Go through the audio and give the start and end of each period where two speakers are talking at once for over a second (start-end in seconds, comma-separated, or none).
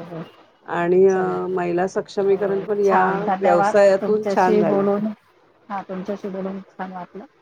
2.1-4.9